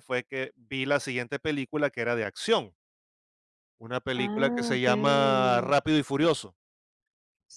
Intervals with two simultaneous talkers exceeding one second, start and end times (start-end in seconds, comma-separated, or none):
4.2-5.7